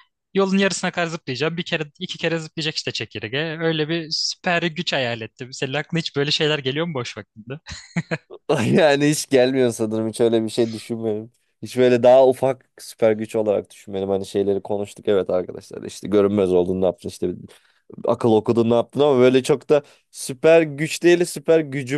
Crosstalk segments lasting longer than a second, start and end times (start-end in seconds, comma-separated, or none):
none